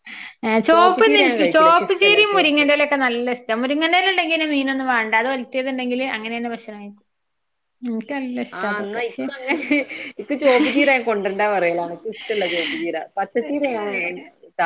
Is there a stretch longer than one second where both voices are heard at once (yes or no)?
yes